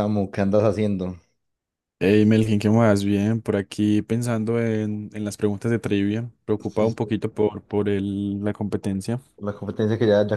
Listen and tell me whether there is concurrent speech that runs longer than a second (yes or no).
no